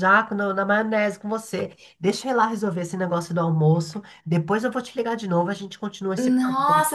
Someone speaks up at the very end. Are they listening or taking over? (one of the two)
taking over